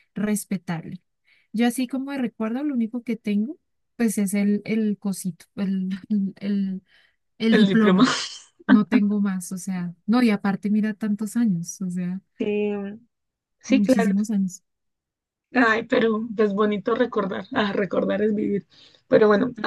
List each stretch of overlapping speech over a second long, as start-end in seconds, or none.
none